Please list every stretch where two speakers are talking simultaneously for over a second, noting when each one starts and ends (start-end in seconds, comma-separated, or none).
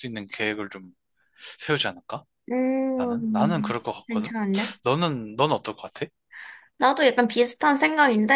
3.0-4.3